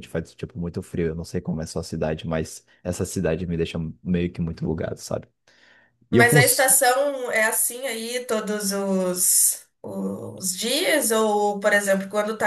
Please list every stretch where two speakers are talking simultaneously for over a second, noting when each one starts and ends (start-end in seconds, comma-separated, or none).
none